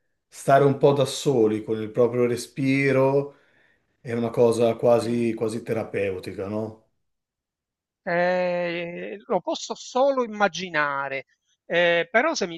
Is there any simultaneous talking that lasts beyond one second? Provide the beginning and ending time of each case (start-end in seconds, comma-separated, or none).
none